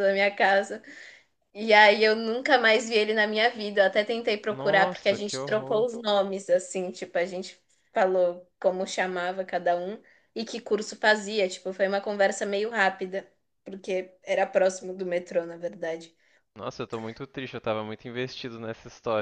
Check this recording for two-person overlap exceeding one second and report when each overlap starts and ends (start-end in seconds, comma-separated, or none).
4.5-5.9